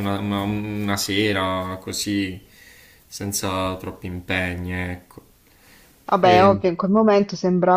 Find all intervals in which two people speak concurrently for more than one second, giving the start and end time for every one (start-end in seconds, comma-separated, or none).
none